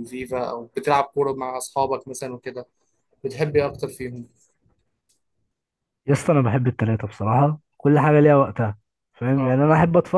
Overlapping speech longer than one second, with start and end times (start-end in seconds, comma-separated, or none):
none